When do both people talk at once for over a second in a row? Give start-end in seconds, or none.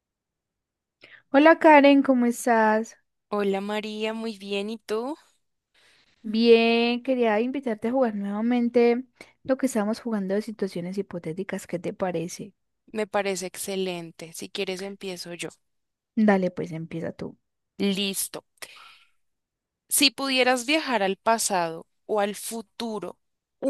none